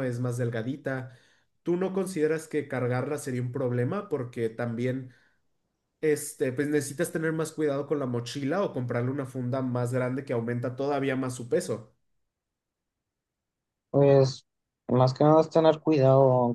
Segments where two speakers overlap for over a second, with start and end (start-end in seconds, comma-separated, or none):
none